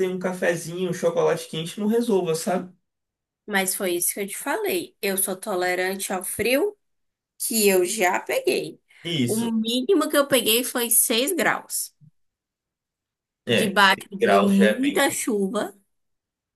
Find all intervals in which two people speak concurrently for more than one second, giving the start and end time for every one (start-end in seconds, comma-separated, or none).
13.6-15.2